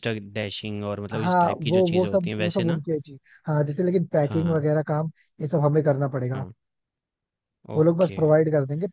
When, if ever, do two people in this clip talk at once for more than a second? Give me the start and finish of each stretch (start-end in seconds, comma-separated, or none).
1.1-2.8